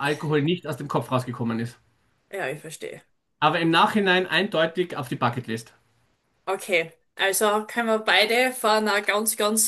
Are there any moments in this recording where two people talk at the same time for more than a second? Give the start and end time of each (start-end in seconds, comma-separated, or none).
none